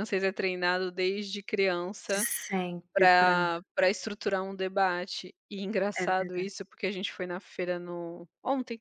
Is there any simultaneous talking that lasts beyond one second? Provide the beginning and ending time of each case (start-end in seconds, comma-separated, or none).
none